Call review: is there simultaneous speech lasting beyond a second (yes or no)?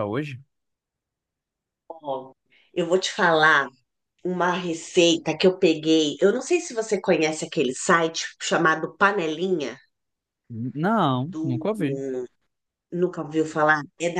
no